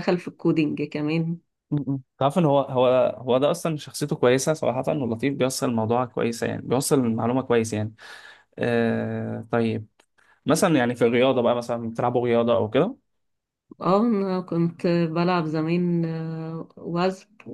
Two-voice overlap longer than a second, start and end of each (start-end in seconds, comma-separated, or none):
none